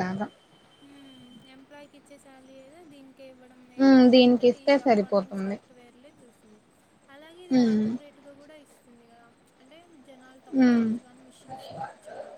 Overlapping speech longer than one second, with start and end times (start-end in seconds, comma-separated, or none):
3.9-5.6